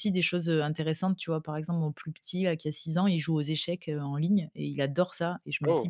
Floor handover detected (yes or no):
no